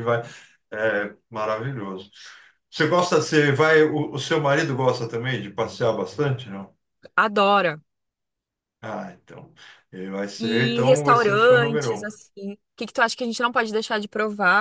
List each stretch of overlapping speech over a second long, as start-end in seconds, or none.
10.4-12.2